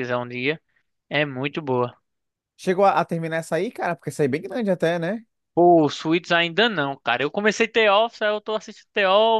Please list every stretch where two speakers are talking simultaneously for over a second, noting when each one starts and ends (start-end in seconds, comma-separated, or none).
none